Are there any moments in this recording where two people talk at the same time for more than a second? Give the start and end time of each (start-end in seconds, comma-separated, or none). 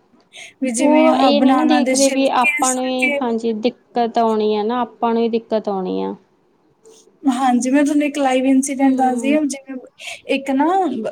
0.8-2.9